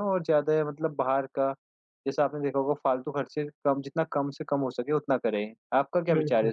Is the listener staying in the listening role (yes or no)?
no